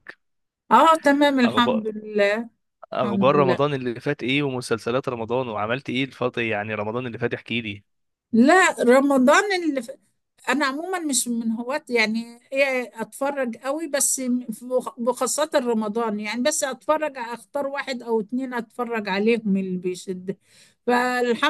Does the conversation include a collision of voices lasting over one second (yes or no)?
no